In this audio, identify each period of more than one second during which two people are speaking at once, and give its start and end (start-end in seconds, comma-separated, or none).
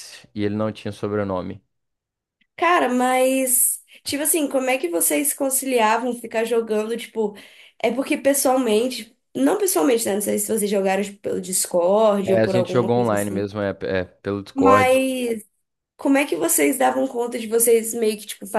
12.2-13.4